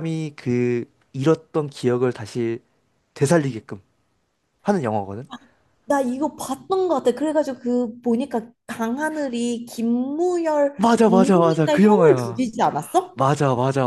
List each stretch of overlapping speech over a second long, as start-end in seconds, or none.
10.8-12.4